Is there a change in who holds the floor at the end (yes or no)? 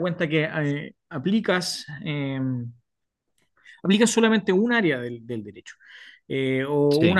no